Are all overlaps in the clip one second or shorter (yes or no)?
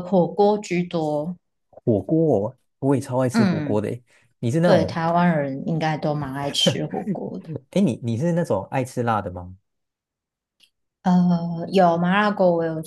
yes